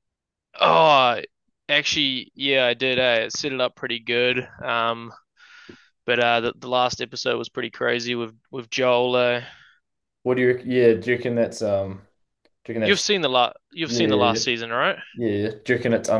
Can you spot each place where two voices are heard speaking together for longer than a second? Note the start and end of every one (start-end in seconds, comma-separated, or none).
none